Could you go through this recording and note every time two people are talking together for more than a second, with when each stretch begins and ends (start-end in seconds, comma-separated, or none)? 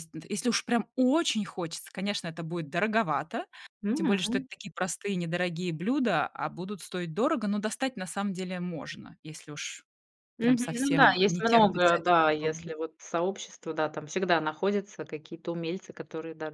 10.4-12.7